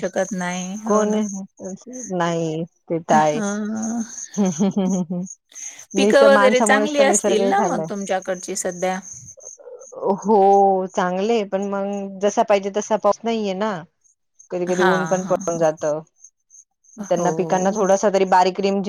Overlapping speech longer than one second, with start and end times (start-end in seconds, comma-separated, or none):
none